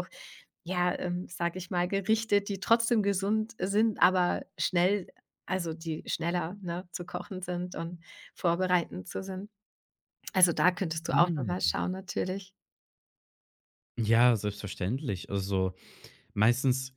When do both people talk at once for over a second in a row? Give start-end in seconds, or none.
none